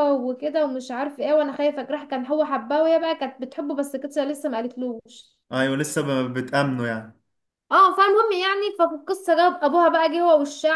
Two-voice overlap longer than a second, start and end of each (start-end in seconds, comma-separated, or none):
none